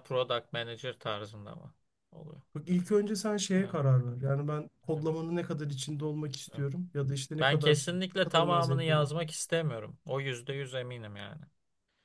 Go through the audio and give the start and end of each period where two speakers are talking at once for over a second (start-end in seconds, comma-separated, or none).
7.4-9.1